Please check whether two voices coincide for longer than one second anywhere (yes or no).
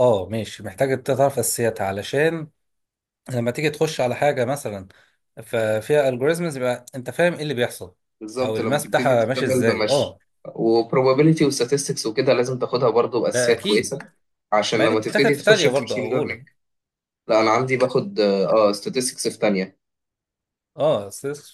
yes